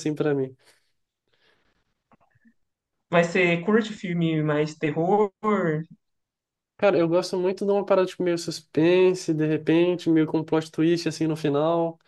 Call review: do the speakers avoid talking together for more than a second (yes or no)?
yes